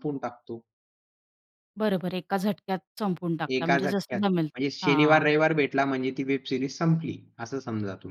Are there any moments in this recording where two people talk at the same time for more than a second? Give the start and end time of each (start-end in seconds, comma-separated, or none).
3.5-5.2